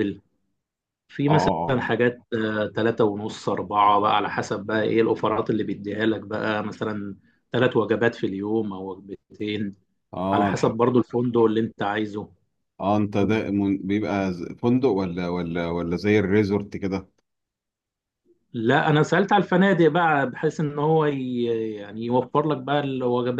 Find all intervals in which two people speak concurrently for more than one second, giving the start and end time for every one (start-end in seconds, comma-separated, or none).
none